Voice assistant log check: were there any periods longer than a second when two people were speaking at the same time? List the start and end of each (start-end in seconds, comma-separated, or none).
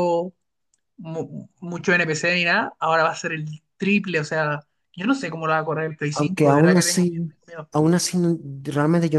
6.1-7.3